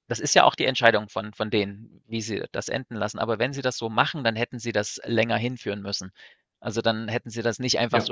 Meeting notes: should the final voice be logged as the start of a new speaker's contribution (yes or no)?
no